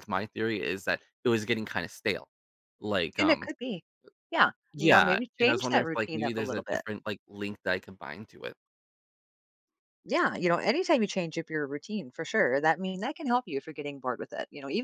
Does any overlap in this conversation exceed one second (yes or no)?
yes